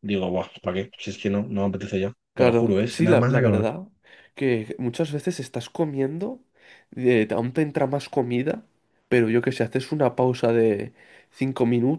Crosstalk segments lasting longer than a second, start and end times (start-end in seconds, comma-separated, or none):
2.3-3.7